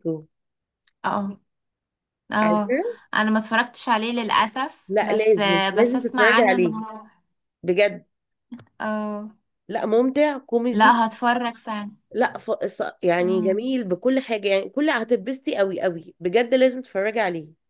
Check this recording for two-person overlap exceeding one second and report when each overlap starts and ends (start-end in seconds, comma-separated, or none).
4.9-6.8